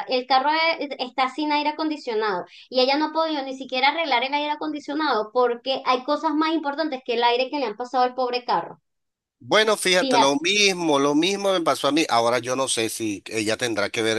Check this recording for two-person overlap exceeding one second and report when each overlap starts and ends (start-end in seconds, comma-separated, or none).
none